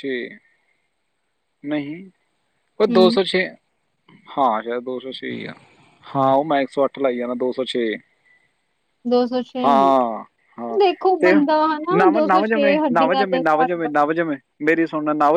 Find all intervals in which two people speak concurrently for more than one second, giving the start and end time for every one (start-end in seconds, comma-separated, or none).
12.0-13.9